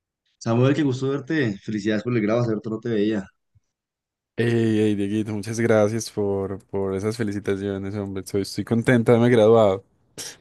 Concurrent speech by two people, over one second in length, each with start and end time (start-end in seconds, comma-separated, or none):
none